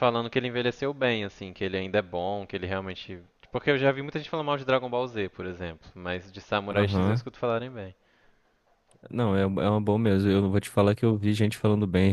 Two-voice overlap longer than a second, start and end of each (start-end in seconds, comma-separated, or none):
none